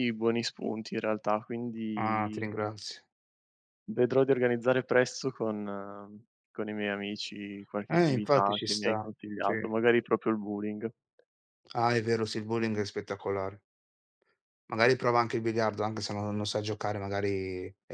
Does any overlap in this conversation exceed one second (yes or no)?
yes